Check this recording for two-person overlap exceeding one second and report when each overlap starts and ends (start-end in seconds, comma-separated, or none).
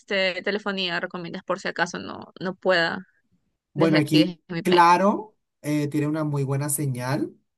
3.8-5.0